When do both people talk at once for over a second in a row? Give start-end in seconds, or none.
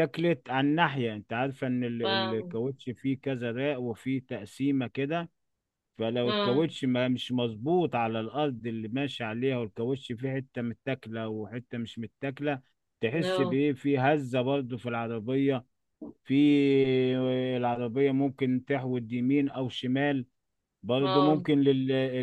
none